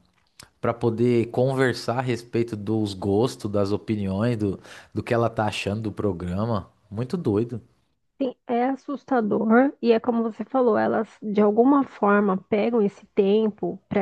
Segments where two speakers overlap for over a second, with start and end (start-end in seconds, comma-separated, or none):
none